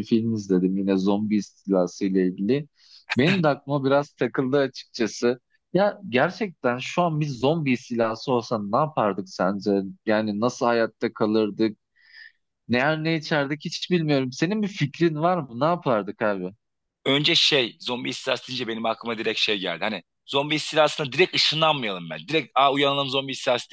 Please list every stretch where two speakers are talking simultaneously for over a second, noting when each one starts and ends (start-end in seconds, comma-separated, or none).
none